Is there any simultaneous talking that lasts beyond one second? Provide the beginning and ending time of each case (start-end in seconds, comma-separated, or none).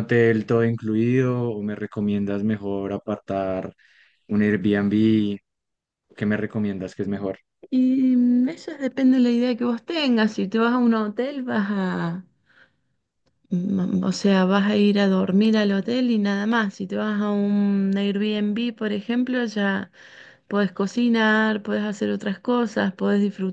none